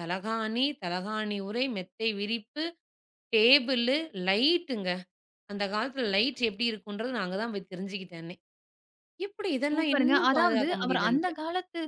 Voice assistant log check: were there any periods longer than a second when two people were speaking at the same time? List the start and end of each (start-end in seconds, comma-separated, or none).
9.7-11.3